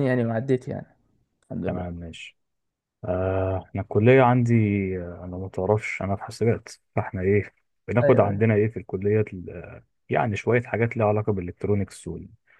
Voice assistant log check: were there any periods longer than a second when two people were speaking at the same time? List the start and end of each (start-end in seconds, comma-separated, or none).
none